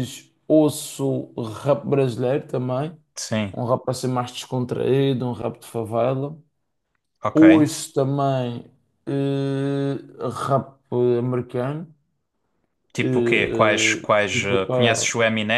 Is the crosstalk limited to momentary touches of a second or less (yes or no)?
no